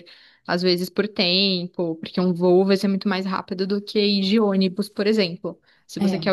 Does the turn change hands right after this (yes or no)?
no